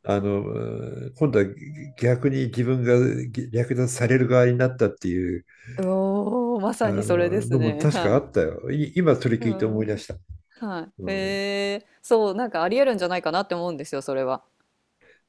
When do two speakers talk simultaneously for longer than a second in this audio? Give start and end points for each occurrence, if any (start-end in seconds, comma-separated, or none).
6.8-8.4